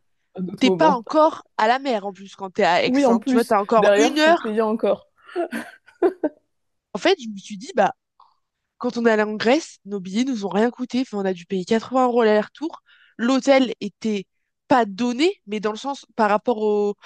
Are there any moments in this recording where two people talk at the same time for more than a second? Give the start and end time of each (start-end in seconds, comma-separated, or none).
2.8-4.6